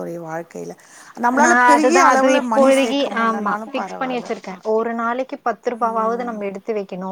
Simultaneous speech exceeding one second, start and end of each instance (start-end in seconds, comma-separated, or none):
2.5-4.3